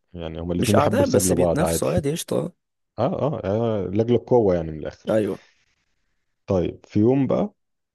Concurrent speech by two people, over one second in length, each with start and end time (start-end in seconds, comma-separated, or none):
0.6-1.9